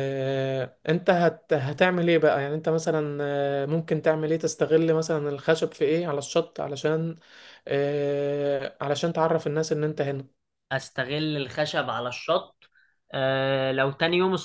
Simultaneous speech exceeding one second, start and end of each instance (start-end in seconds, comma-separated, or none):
none